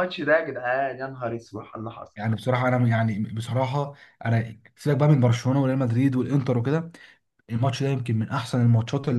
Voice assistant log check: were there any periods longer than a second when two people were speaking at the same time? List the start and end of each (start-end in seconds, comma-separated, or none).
none